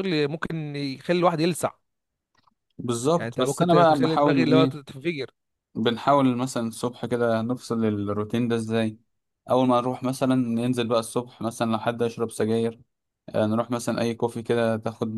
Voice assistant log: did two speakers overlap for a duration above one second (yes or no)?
yes